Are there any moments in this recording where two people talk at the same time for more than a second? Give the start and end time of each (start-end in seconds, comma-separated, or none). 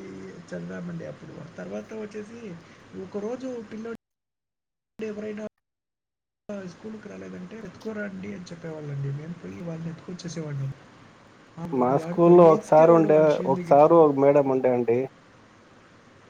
none